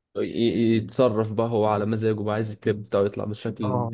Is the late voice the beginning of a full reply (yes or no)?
yes